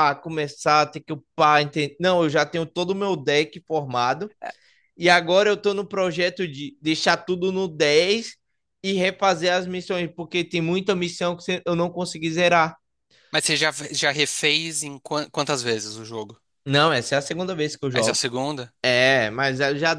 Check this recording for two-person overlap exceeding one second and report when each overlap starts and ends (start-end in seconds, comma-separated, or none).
none